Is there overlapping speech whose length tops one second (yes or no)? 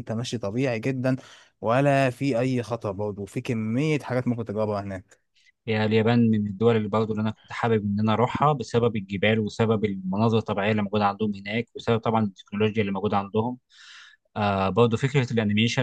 no